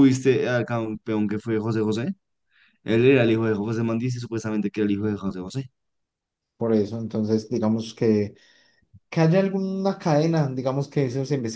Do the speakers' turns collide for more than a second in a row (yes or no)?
no